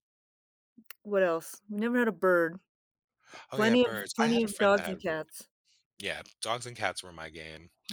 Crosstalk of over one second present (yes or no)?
yes